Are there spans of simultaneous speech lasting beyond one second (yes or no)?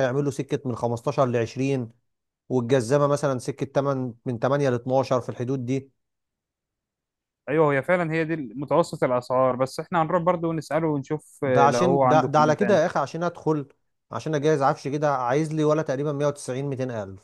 yes